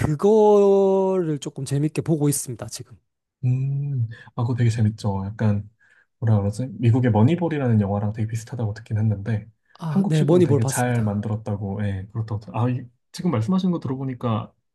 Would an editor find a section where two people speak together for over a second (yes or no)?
yes